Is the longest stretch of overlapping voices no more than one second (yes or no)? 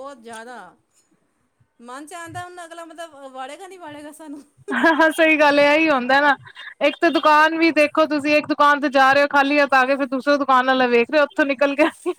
yes